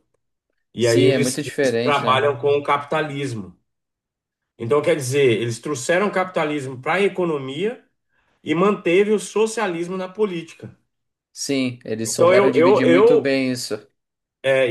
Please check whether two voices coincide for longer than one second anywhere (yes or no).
yes